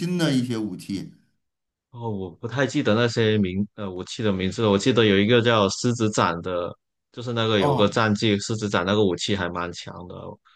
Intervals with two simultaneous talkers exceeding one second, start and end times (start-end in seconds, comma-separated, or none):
none